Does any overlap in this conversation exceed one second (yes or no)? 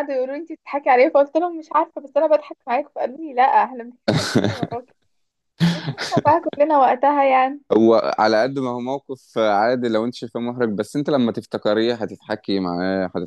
no